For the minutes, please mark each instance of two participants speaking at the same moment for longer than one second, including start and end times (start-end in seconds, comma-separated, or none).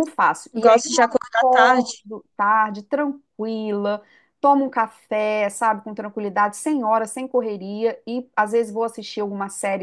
0.5-2.0